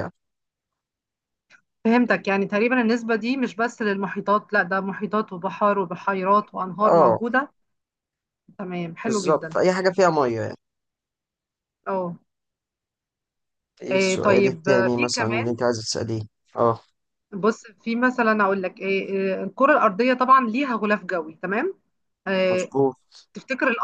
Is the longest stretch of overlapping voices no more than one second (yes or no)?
no